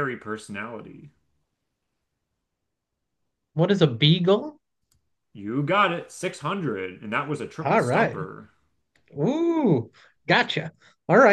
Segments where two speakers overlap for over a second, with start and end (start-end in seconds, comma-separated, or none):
none